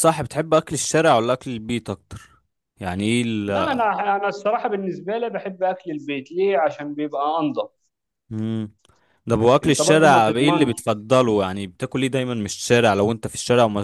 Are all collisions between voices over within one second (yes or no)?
no